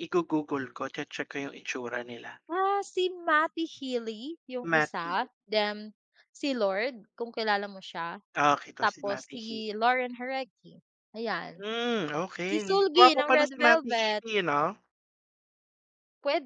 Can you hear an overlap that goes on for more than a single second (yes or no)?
yes